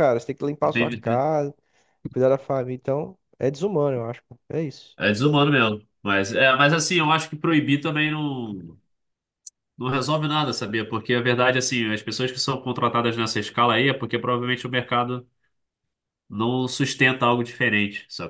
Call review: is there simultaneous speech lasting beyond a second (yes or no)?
no